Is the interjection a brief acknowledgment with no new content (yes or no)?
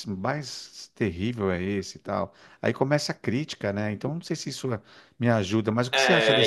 no